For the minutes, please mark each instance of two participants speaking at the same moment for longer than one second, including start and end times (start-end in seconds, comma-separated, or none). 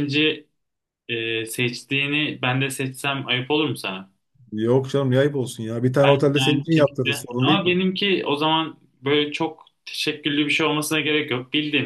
6.0-7.8